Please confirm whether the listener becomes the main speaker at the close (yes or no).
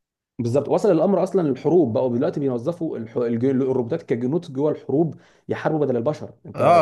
yes